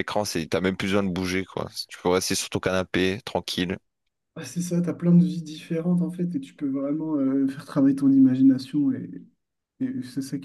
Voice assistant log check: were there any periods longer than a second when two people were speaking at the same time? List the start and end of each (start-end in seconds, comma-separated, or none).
none